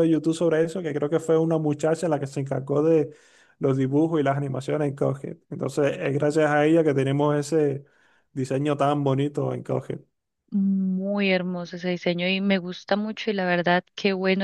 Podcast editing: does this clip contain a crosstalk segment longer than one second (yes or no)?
no